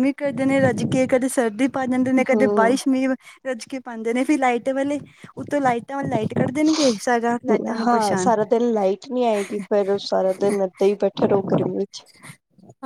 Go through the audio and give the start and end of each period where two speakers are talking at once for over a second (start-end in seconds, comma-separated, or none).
none